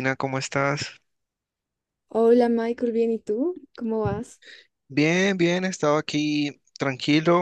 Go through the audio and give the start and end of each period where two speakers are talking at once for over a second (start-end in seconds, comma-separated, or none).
none